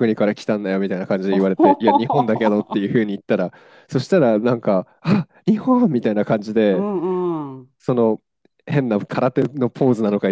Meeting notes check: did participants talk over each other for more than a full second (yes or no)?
yes